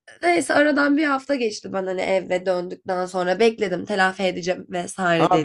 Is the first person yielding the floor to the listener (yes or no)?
yes